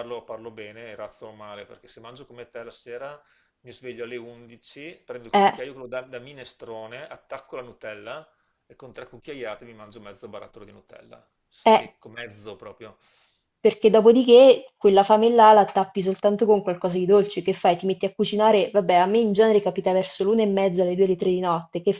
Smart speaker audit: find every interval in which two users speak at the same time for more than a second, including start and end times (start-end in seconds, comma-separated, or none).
none